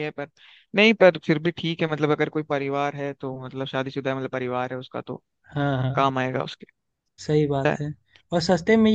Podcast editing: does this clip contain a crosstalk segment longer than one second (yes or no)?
no